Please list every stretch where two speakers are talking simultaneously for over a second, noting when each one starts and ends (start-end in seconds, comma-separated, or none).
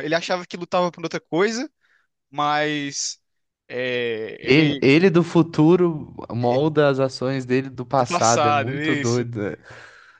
7.9-9.2